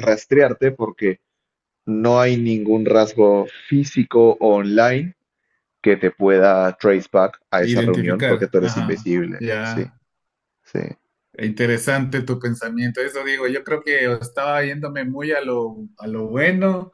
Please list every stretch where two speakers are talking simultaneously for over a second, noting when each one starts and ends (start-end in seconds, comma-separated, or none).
7.6-9.8